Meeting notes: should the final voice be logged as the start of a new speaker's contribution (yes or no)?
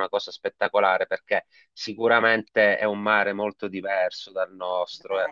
no